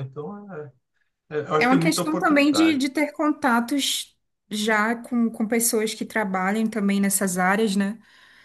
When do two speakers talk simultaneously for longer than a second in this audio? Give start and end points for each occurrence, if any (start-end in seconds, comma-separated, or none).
1.6-2.8